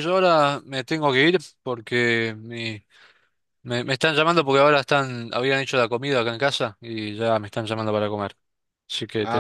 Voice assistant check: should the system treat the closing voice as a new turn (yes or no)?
yes